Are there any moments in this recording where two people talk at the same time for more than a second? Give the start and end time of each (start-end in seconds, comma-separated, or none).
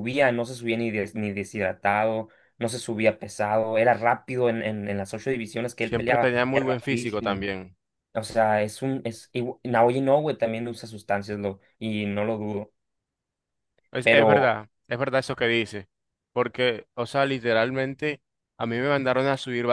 5.8-7.4